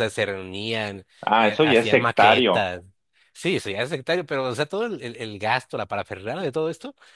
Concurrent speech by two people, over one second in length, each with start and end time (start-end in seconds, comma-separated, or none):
1.2-2.7